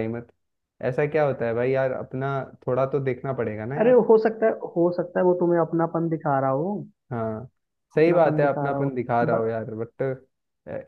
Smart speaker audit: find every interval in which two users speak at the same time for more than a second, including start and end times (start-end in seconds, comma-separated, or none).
8.0-9.4